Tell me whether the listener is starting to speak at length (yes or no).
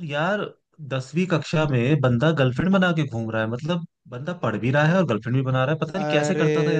yes